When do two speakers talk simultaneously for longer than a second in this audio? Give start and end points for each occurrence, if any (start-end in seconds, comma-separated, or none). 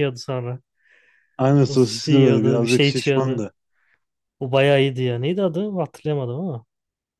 1.7-3.5